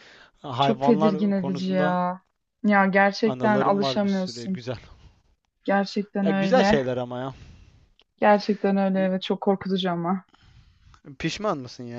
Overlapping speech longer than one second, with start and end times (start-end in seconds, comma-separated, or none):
0.6-2.0, 3.2-4.6